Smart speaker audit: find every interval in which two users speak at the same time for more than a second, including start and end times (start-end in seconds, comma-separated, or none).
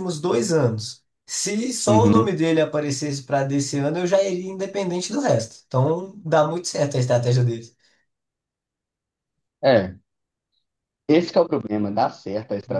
none